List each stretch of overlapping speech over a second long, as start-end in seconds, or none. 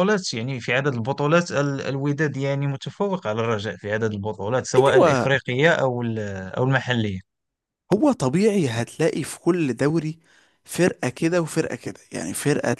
none